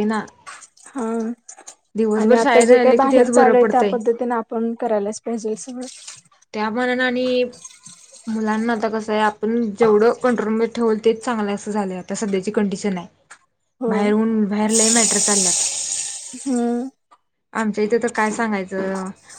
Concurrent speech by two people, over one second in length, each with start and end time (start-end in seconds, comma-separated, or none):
2.2-3.9